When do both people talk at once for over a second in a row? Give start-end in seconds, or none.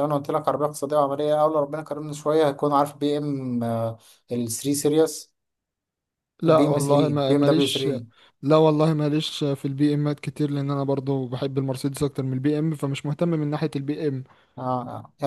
6.5-7.9